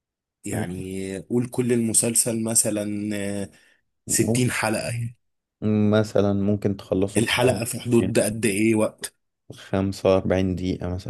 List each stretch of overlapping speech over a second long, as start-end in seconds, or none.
none